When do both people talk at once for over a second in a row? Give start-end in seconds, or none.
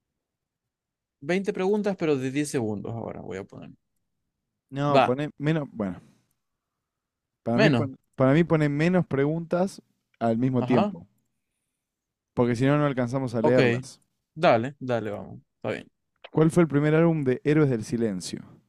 none